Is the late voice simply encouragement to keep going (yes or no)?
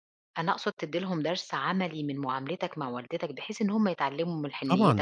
no